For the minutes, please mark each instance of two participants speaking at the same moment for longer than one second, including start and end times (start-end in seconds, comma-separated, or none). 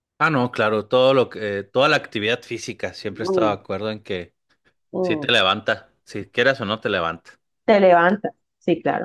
none